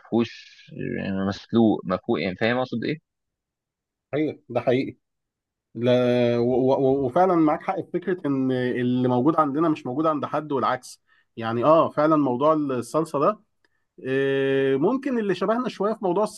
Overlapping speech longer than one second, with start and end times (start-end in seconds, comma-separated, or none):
none